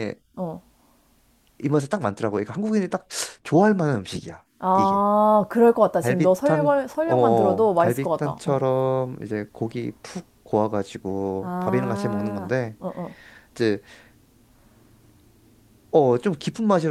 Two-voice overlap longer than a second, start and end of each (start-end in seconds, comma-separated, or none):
6.0-8.6, 11.4-12.8